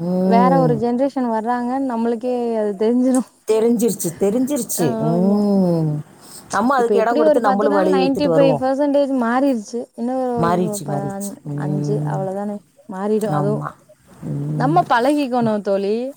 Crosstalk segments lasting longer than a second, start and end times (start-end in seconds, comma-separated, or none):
6.8-8.6